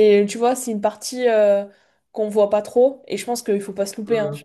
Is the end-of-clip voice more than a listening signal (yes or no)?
no